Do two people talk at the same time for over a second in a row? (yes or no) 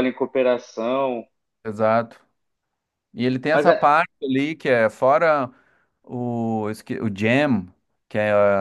no